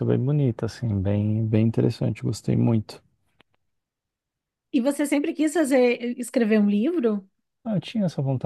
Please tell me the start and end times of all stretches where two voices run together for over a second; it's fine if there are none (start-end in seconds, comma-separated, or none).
none